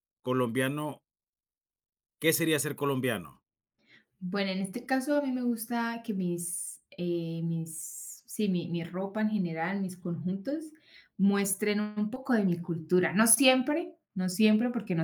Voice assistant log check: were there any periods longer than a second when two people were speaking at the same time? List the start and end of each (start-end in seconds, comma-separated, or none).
none